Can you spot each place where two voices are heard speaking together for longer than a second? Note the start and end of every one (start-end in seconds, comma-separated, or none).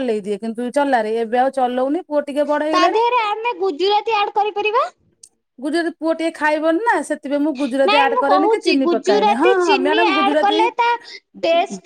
7.9-10.6